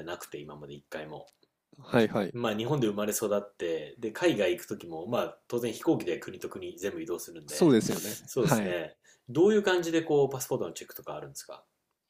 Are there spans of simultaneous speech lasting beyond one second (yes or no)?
yes